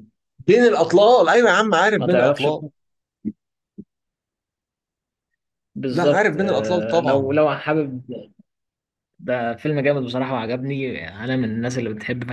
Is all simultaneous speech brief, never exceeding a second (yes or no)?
no